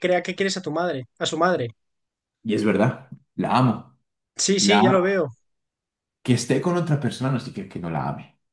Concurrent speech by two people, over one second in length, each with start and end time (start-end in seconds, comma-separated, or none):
none